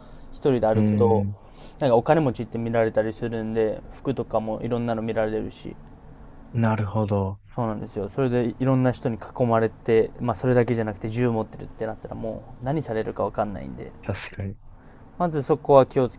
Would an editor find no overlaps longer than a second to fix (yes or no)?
yes